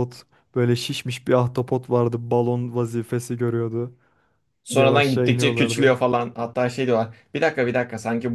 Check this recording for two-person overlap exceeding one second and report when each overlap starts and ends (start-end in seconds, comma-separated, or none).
4.7-5.9